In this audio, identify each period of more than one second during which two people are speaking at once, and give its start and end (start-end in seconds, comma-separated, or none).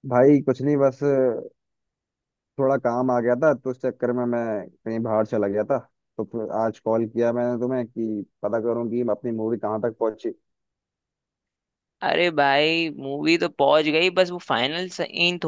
none